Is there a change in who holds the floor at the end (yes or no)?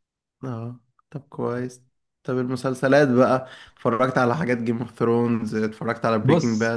yes